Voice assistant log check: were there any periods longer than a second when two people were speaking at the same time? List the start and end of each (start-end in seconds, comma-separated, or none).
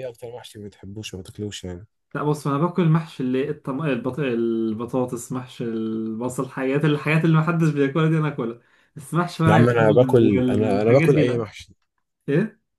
9.4-11.5